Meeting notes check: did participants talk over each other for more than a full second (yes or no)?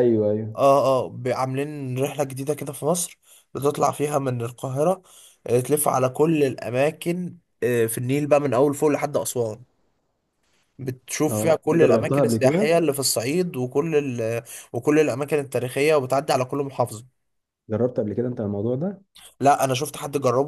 yes